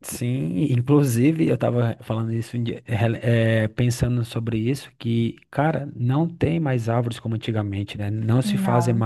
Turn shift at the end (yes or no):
no